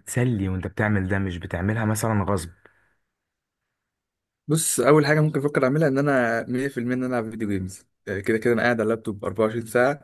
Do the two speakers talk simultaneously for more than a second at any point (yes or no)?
no